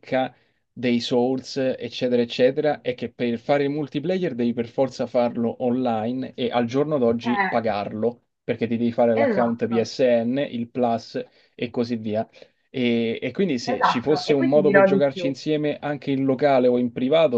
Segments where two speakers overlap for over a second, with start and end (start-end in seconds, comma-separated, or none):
13.7-15.4